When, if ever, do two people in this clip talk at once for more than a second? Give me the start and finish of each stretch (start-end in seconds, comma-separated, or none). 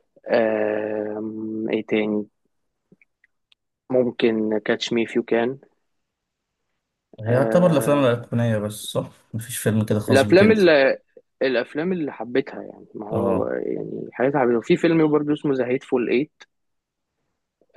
none